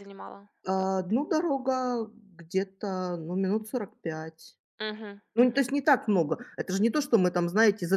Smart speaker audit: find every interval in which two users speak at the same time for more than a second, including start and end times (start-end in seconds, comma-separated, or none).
none